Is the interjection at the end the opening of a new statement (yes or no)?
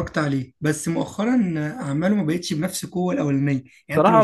no